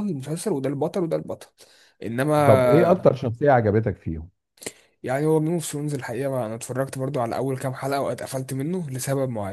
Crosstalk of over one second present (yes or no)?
no